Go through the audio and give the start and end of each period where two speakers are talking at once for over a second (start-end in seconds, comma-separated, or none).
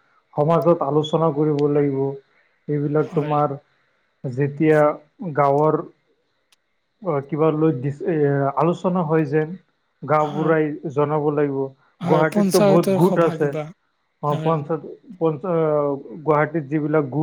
12.0-13.6